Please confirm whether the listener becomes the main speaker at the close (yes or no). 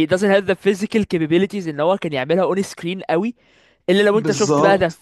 no